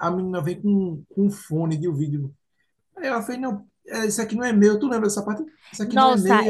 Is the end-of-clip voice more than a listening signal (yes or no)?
yes